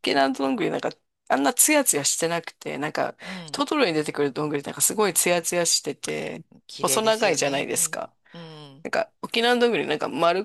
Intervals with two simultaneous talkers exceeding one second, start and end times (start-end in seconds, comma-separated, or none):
6.8-8.1